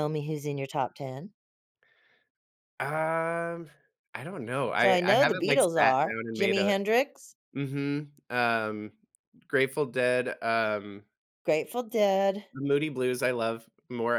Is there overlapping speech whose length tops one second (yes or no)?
yes